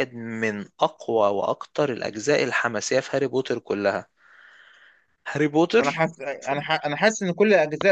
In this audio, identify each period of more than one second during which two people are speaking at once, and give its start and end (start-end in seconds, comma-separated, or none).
none